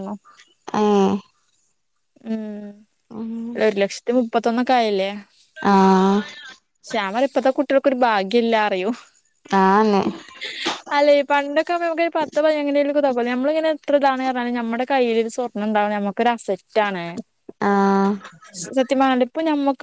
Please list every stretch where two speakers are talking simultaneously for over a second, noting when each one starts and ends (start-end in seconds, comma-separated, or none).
none